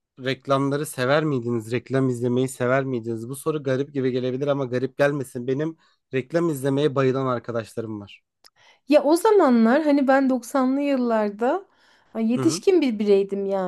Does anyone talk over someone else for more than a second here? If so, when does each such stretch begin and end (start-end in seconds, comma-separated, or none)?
none